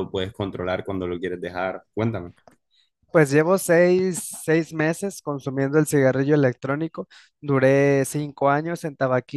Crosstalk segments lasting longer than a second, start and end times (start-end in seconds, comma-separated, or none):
none